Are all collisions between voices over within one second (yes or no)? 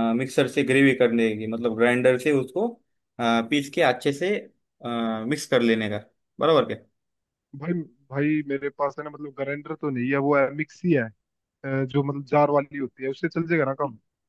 yes